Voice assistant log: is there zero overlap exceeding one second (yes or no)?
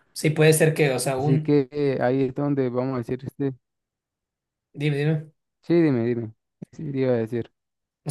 yes